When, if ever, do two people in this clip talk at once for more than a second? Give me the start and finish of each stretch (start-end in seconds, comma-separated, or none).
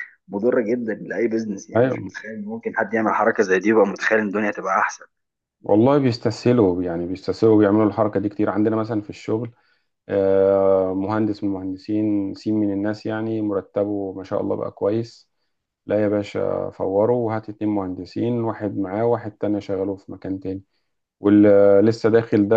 none